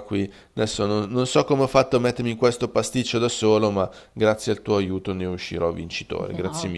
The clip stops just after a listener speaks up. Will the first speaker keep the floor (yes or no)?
no